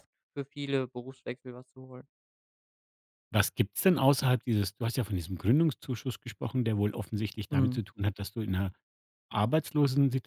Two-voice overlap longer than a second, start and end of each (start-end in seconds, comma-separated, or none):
none